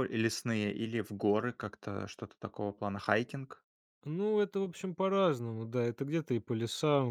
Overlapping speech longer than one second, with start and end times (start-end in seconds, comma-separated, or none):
none